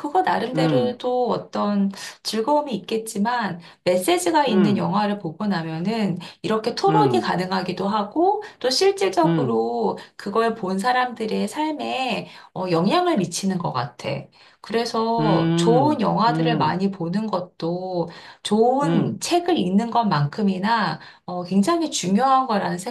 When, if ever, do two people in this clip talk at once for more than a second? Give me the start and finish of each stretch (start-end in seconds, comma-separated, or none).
15.2-16.8